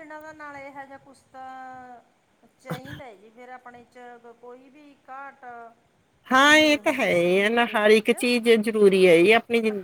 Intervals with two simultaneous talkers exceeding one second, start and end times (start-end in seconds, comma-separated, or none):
6.5-8.1